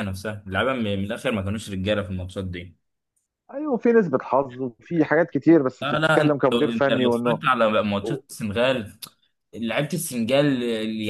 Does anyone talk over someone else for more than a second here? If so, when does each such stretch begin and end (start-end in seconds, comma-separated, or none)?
5.8-7.4